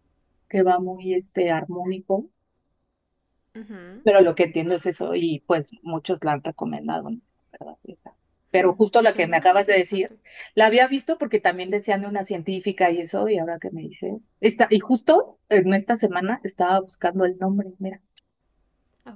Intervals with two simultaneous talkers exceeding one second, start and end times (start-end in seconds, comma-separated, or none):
8.5-10.1